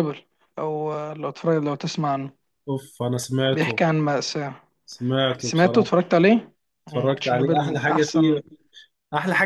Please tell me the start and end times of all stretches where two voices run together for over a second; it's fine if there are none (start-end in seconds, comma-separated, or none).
6.9-8.3